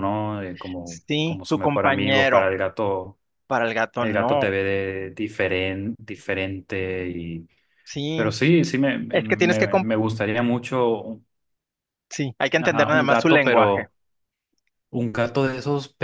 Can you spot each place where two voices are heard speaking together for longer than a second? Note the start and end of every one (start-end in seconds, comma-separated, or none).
0.8-2.5, 12.6-13.9